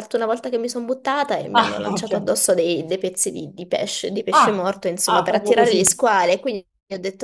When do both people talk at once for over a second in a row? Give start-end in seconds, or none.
4.3-5.9